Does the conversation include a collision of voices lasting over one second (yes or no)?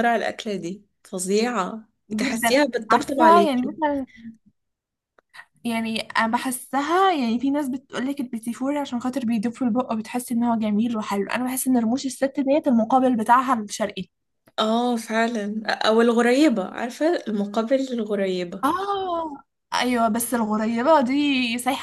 yes